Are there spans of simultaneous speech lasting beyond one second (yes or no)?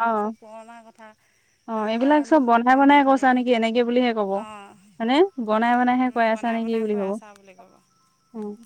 yes